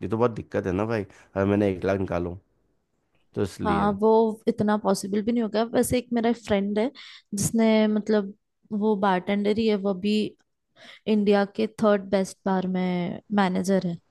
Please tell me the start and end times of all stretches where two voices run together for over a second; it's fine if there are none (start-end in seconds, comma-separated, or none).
none